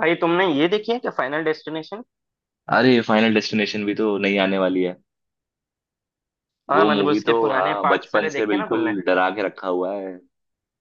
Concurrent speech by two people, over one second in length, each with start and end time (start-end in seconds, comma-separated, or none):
6.7-8.9